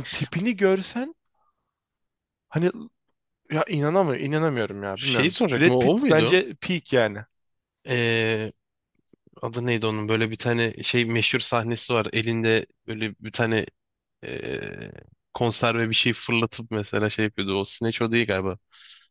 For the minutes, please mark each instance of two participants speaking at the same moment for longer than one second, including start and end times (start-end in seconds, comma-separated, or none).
4.9-6.4